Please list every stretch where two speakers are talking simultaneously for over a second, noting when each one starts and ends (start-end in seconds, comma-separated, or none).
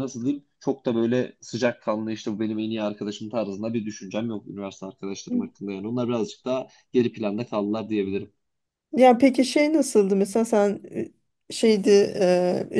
none